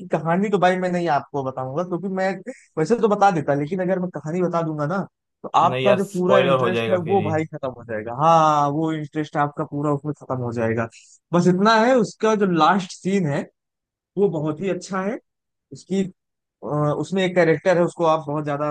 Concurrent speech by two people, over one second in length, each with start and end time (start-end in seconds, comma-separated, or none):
5.6-7.3